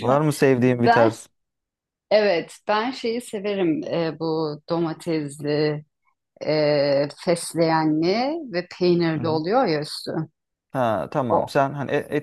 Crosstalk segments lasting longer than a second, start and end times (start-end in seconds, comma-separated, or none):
none